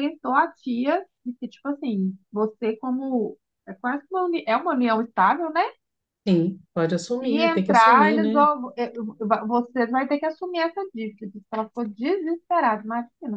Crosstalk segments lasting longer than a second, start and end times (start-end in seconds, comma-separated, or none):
7.2-8.4